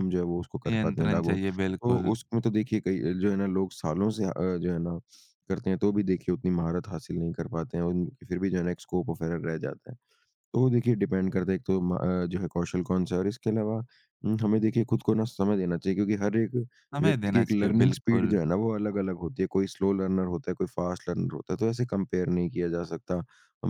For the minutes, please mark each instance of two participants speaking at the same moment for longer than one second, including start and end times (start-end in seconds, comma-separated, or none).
0.7-2.1, 17.0-18.4